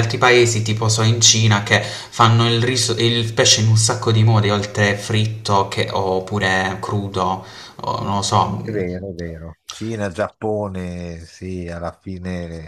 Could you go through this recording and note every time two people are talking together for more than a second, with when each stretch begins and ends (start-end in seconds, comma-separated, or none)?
none